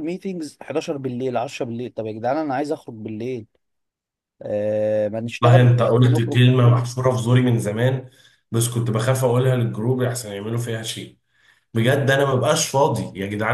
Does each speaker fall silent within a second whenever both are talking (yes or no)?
no